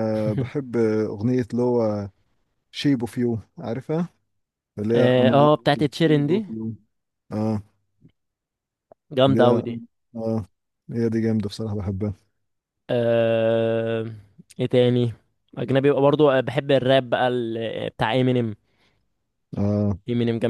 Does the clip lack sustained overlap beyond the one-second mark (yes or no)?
no